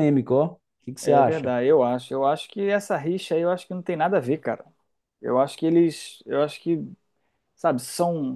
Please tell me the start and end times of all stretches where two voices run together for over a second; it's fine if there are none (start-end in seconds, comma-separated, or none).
none